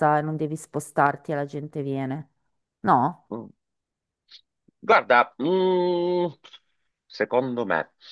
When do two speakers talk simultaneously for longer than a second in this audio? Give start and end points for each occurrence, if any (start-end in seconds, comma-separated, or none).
none